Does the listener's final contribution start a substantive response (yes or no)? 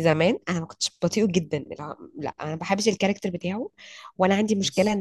no